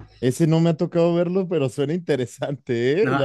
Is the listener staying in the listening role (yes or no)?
no